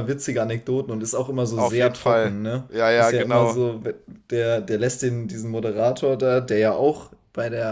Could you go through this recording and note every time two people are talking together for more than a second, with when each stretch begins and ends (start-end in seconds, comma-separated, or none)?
1.5-3.6